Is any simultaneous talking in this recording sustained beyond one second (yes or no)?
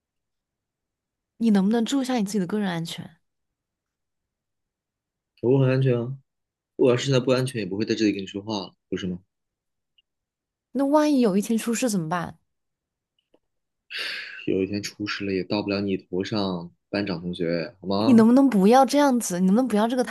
no